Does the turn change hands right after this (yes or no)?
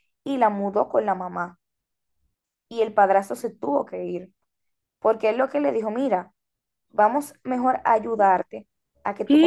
no